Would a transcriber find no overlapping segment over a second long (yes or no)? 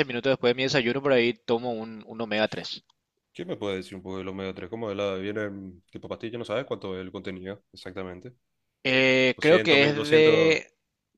no